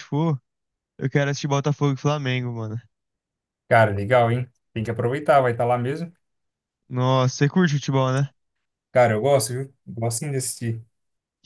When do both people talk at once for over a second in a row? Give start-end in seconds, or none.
none